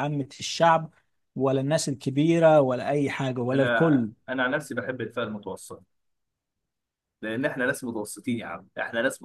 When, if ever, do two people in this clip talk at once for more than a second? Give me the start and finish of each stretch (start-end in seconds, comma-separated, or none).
none